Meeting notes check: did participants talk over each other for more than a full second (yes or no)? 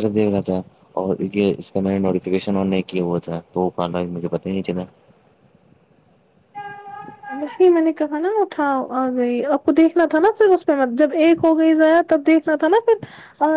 no